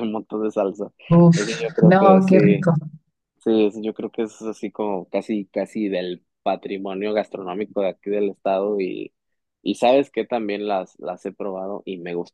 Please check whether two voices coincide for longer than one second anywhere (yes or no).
yes